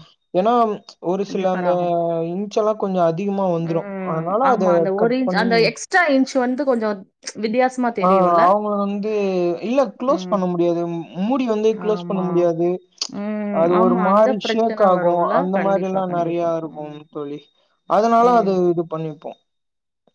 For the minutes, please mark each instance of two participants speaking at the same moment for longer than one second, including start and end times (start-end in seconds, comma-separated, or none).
13.6-17.0